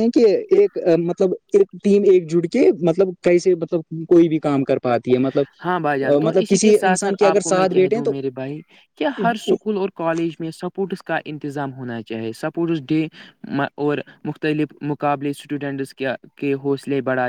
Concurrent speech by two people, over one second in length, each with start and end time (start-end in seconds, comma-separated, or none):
6.2-8.1